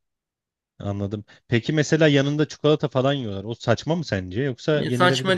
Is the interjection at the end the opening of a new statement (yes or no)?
yes